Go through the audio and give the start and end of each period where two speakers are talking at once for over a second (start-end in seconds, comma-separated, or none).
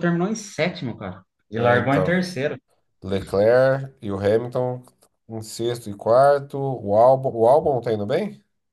none